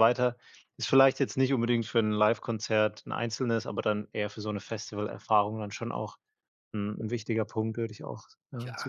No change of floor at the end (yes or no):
no